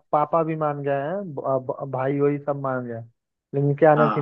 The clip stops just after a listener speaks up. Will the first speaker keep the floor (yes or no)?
yes